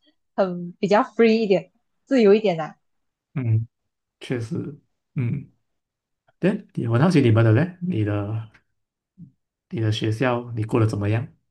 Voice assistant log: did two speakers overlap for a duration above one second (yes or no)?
no